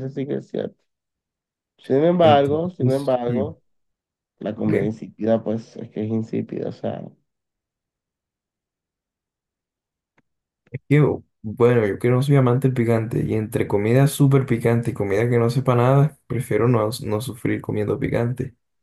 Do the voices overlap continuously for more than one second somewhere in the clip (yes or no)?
yes